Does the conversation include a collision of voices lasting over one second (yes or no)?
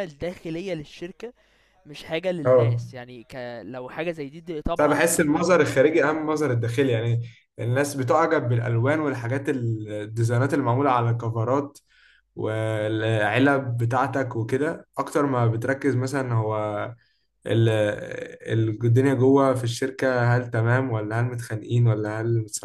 yes